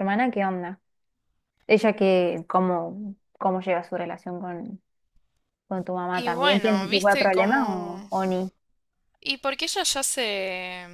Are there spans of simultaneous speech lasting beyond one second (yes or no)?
yes